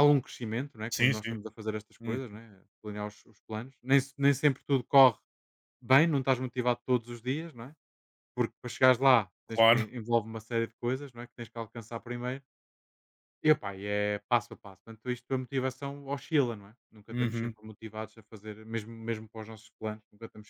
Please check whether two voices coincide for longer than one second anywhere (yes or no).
no